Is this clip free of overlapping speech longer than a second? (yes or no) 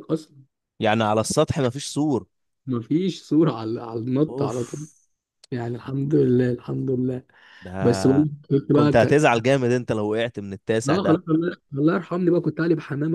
no